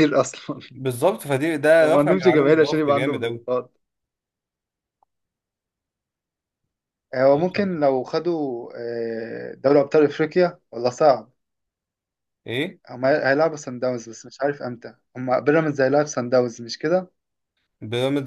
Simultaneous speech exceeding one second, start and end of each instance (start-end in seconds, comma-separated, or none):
1.8-3.5